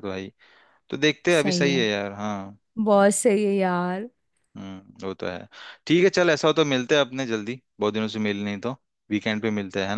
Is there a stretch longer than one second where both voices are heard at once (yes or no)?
no